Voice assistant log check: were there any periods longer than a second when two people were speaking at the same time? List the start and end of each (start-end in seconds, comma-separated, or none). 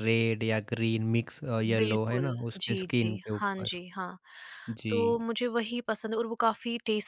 1.8-3.7